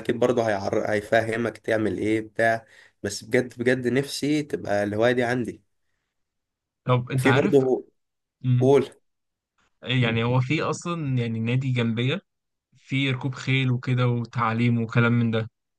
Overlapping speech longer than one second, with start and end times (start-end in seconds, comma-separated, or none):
none